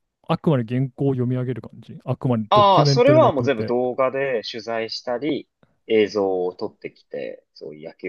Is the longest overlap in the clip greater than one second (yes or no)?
yes